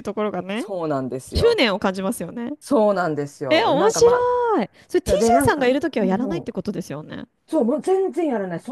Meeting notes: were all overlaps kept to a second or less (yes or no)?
no